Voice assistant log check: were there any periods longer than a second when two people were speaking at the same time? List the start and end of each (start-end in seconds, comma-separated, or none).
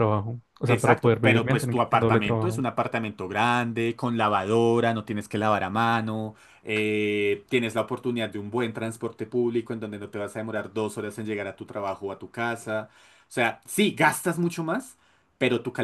0.7-2.6